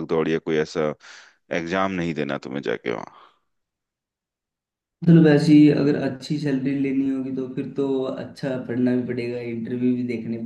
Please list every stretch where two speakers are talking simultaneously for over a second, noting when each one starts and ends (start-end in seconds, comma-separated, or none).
none